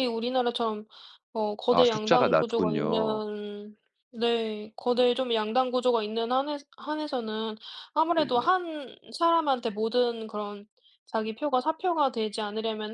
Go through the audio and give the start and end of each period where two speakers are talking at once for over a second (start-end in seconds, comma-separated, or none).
1.7-3.2